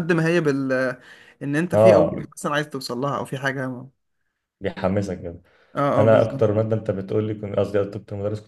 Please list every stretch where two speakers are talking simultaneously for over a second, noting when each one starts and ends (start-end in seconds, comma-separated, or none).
none